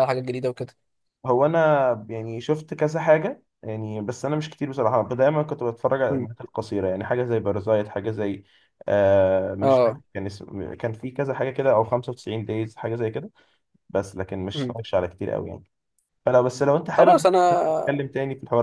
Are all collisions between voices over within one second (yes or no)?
yes